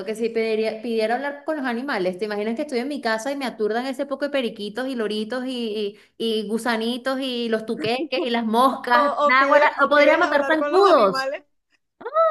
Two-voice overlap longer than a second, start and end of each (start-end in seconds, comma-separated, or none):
8.7-11.3